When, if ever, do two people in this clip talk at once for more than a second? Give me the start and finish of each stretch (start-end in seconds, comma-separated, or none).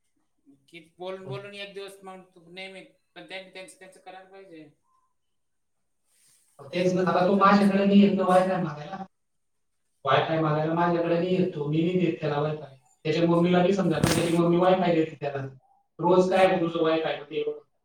6.7-8.3